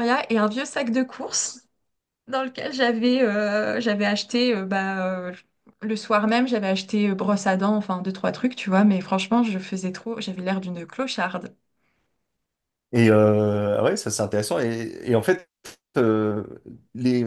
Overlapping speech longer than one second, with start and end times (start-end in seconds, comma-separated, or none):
none